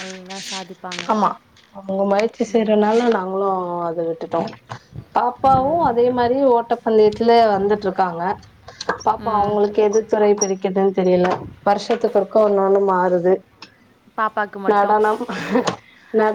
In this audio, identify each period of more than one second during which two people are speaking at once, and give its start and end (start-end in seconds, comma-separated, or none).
none